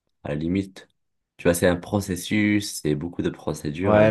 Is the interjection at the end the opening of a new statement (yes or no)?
yes